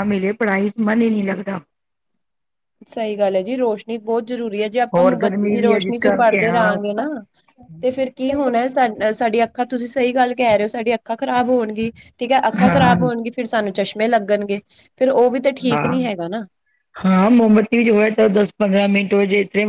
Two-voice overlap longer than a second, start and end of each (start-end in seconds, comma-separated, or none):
5.0-6.7